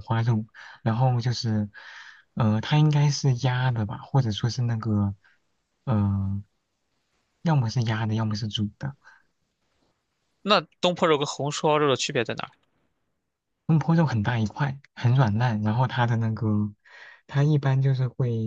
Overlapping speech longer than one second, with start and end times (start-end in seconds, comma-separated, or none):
none